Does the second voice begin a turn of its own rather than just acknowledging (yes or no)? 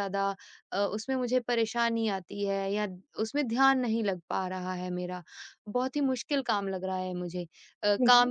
no